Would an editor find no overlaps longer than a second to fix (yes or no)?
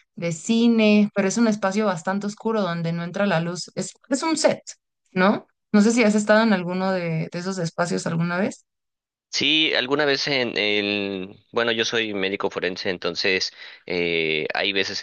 yes